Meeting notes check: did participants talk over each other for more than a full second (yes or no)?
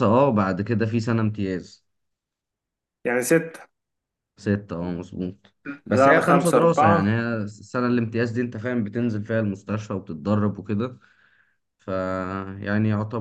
yes